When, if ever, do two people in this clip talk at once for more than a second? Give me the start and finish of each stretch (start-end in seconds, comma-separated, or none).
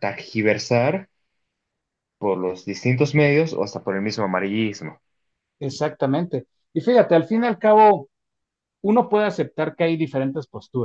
none